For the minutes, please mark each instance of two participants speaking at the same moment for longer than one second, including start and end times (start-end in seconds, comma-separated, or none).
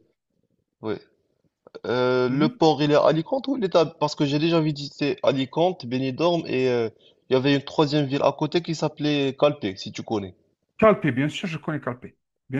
none